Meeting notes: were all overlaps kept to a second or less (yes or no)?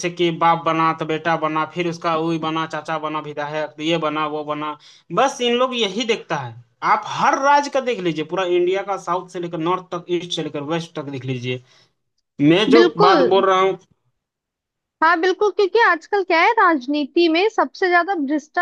yes